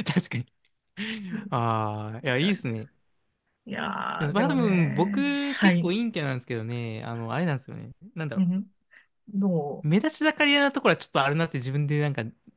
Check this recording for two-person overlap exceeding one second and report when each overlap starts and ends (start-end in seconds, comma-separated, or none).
4.2-5.9